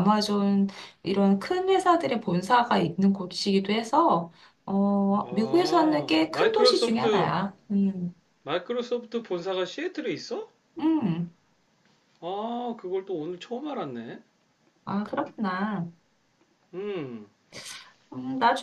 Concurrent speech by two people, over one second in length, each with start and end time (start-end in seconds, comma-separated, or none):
5.2-7.3